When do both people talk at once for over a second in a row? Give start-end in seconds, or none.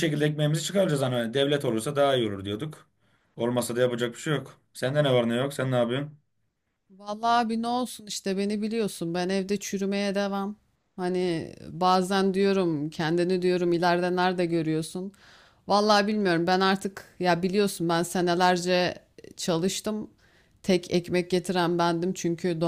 none